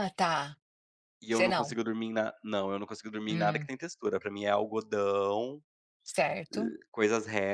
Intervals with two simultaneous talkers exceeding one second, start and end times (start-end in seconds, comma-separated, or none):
none